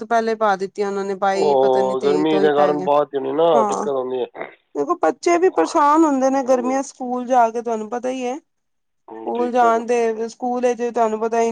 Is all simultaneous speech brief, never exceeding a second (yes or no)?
no